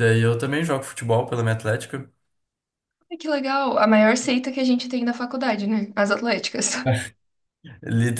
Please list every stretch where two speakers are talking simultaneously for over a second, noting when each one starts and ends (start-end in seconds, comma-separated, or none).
none